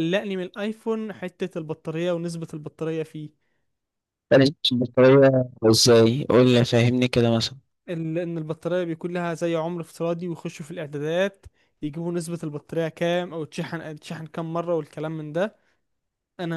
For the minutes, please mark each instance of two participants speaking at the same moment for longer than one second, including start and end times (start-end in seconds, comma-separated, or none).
none